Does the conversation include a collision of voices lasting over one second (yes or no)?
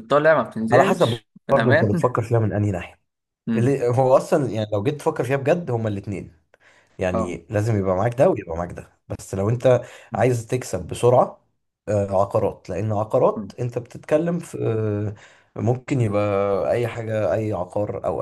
yes